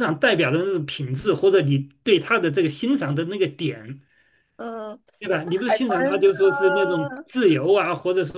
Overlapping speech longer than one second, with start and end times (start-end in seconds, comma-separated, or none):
5.4-7.2